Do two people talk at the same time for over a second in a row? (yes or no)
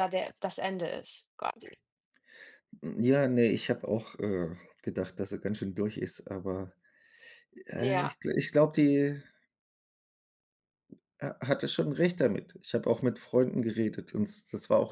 no